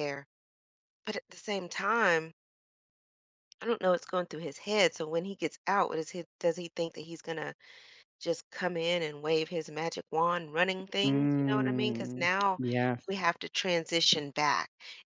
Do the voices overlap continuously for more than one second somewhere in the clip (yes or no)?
yes